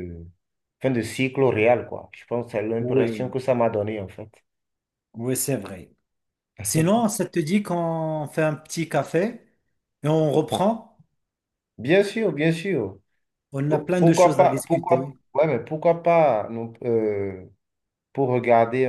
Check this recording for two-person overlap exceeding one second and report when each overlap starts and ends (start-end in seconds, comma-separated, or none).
13.7-15.1